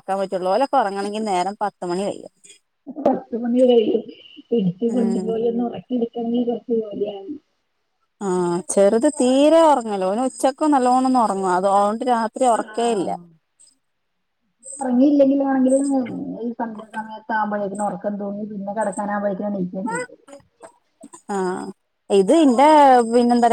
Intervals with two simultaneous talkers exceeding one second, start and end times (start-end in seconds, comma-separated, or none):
none